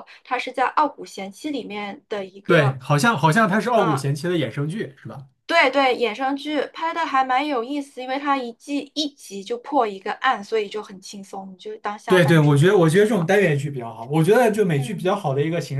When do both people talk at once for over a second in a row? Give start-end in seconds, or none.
12.1-13.3